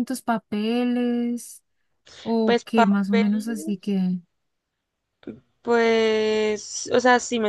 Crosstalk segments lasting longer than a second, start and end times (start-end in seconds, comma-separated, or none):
2.4-3.8